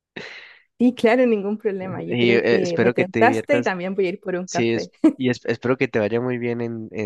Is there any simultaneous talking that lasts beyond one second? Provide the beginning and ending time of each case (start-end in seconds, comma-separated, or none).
2.1-3.7